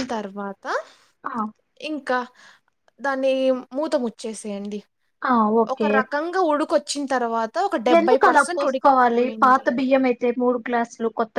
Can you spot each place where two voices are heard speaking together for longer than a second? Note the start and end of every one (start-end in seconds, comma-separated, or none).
8.0-9.6